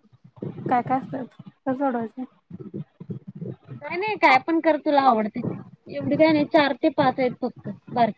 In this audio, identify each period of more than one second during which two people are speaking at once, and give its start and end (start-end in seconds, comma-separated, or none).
none